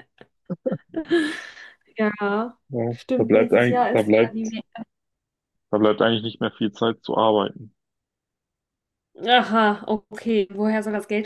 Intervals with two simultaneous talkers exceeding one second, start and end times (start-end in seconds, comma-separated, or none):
2.7-4.4